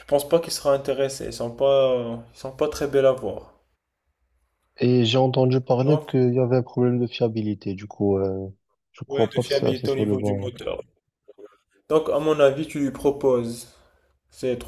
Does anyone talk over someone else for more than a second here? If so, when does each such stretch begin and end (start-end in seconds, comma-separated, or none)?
9.1-10.5